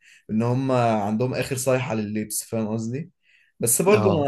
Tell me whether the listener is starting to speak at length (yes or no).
no